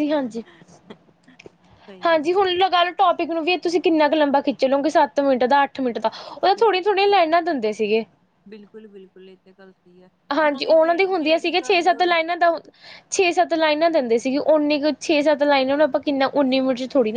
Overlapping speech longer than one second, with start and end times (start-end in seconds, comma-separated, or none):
10.4-11.8